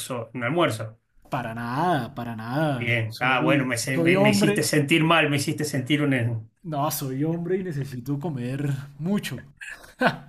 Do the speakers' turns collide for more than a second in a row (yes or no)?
yes